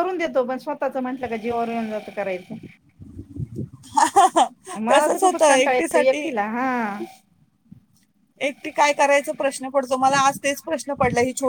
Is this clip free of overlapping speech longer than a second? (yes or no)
no